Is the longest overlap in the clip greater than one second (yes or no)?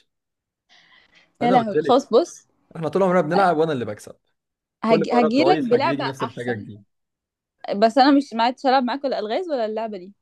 yes